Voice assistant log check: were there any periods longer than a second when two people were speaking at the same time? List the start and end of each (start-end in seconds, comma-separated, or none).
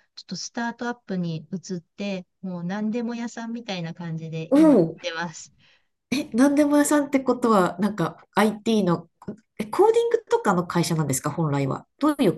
none